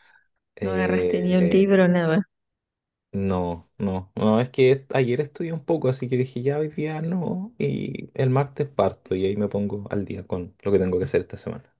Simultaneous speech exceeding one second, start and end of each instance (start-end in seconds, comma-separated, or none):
0.6-1.8